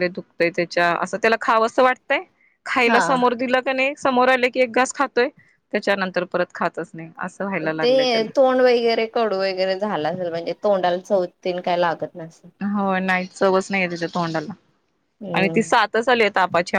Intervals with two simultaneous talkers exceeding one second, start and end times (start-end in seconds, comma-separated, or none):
none